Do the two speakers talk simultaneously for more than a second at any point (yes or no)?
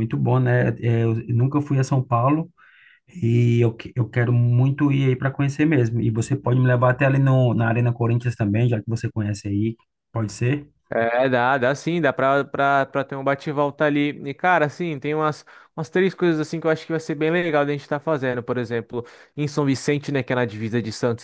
no